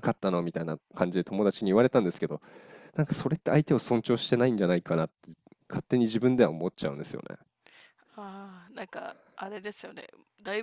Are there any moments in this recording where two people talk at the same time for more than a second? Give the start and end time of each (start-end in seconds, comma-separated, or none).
none